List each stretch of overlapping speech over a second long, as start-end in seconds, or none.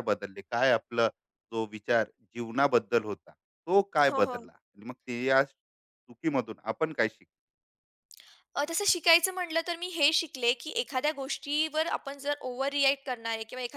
none